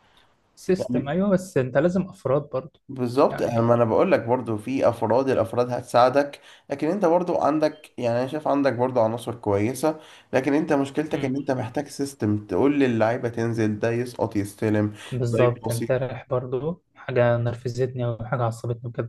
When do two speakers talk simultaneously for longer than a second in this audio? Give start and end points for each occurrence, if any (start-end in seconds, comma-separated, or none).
none